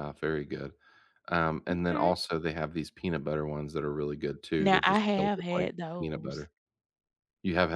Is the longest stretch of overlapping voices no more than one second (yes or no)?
no